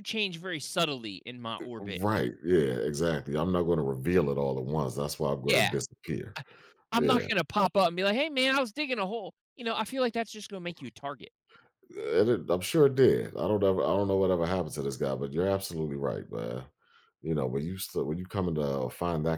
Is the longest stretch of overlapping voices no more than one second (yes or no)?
yes